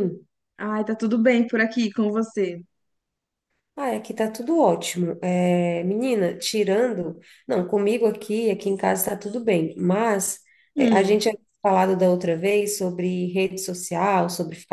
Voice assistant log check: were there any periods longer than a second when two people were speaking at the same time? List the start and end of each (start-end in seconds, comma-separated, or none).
none